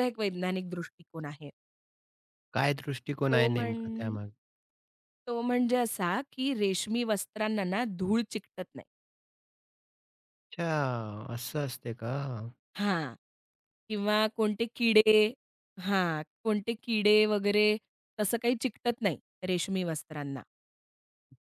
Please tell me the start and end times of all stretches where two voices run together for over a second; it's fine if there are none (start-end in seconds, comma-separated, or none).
none